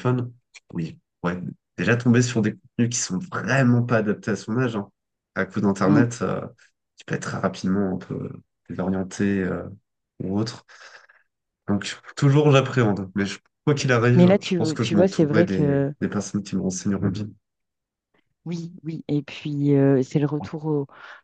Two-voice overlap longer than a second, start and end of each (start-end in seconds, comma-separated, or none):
14.2-15.9